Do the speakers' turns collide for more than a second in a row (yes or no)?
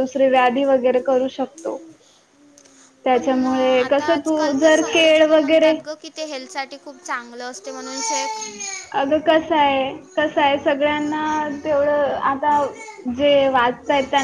yes